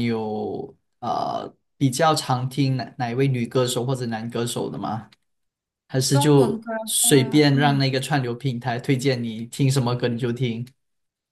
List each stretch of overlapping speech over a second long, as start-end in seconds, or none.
6.1-7.8